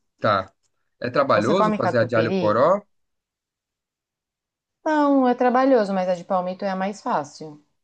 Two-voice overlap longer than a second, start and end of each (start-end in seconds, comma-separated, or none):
1.3-2.6